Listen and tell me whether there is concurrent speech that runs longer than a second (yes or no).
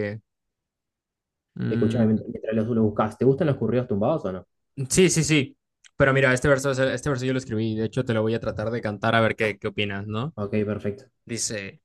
no